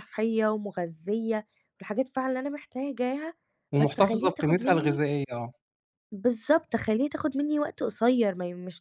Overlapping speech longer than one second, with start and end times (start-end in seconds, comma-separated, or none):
3.8-5.0